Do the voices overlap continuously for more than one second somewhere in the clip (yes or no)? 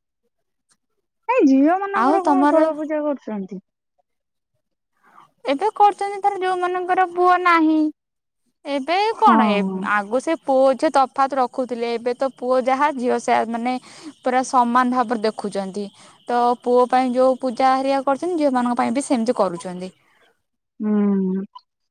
no